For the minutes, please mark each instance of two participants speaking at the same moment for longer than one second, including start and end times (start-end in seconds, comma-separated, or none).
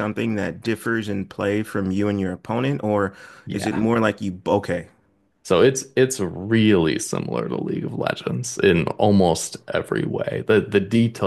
none